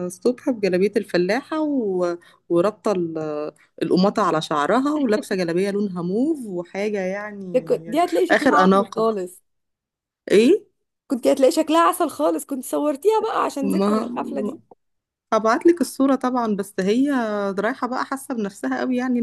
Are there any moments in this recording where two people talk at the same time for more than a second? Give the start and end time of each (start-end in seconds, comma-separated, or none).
7.5-9.1